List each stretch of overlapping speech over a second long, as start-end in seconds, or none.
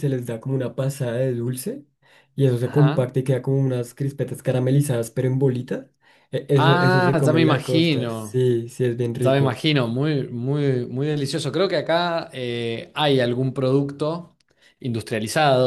6.5-8.4